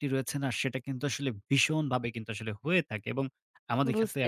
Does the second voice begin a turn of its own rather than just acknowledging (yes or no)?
no